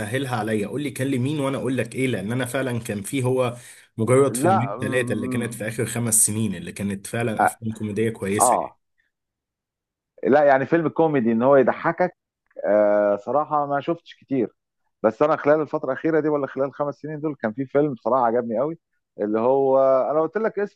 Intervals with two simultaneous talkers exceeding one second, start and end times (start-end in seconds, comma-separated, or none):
4.3-5.6